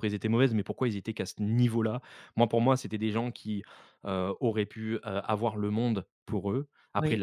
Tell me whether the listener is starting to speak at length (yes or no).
no